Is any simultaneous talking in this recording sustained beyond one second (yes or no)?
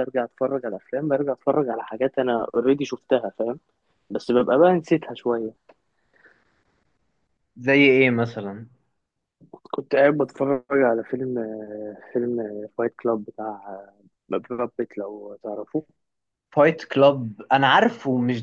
no